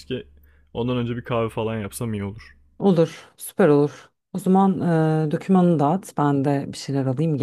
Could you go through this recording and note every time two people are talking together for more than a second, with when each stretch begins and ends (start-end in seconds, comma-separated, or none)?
none